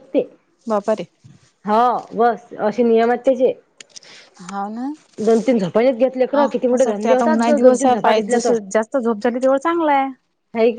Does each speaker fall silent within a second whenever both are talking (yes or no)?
no